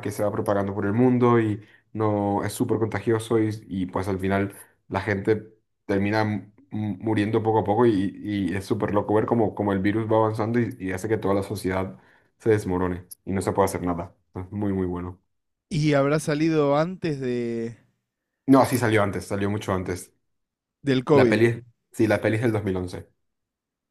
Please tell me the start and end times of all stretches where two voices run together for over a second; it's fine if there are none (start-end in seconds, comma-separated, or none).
none